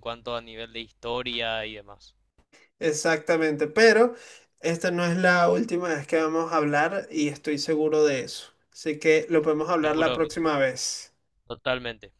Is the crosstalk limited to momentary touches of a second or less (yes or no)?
yes